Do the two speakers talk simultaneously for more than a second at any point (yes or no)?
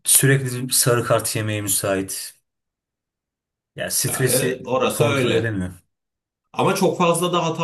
yes